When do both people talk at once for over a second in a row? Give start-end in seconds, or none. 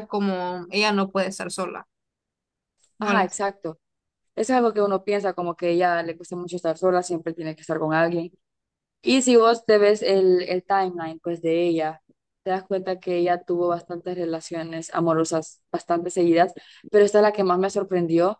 none